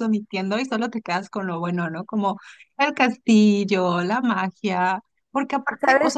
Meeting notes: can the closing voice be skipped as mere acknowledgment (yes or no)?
yes